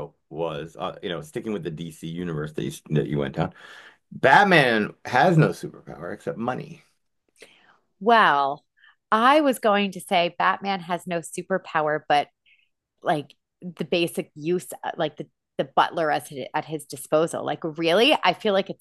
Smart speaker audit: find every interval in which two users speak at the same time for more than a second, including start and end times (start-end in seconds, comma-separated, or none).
none